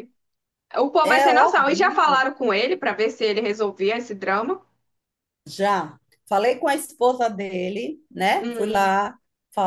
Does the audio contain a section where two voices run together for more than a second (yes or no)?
yes